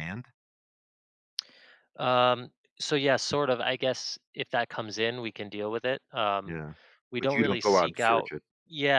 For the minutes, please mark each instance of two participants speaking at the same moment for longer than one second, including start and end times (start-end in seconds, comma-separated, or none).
7.2-8.4